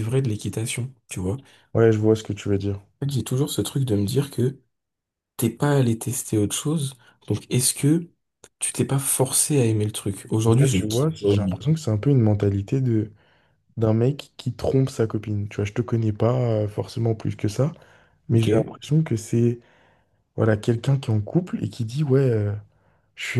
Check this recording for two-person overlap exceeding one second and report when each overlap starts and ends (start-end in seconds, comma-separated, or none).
10.4-11.7